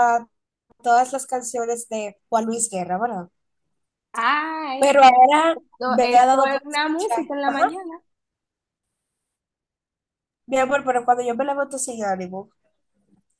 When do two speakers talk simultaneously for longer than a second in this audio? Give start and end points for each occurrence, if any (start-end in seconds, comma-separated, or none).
5.8-7.8